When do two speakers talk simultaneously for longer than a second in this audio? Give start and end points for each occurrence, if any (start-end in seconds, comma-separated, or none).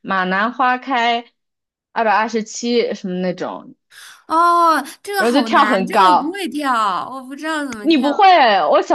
5.2-6.4